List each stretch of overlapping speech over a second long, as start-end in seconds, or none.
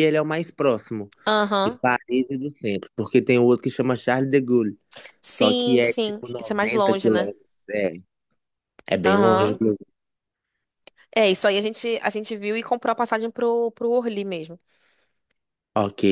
5.2-7.3